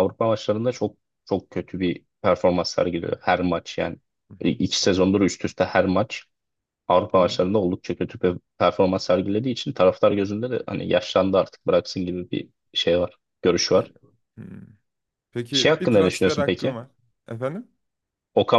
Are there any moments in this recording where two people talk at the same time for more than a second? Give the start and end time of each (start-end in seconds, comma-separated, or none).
15.5-16.8